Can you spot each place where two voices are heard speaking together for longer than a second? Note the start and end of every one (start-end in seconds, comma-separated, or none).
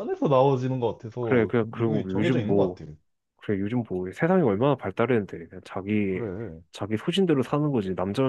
1.2-2.8